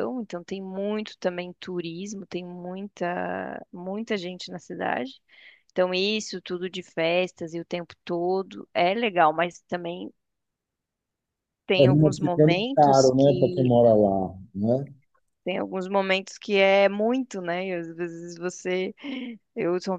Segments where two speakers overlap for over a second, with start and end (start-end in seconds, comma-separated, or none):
11.8-13.7